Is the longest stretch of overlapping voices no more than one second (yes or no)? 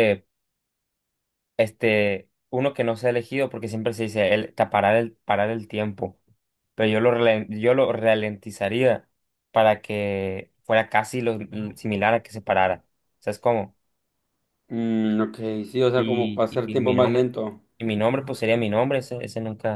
no